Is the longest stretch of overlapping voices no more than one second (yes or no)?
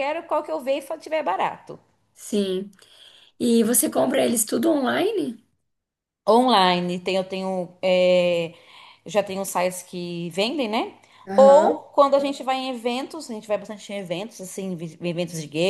yes